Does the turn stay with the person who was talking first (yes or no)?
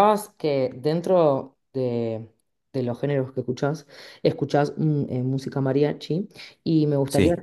yes